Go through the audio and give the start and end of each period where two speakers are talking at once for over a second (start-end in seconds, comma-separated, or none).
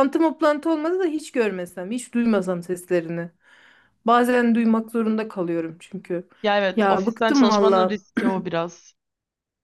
6.8-8.0